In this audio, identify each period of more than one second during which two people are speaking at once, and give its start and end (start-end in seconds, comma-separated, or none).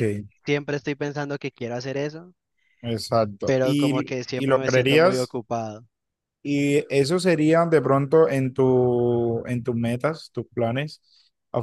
3.5-5.4